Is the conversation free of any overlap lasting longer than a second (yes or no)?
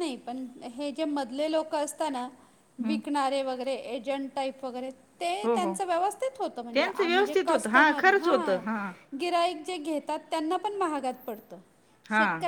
no